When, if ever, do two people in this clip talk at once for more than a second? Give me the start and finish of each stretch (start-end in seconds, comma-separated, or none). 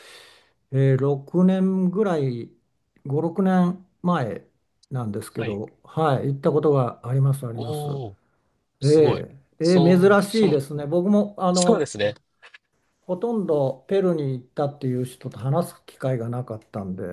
8.8-10.6